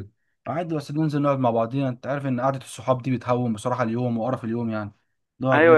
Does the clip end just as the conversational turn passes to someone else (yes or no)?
yes